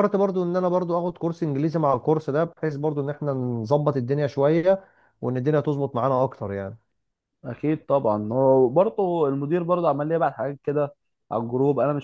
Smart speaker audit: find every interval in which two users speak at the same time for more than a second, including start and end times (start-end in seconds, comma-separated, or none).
none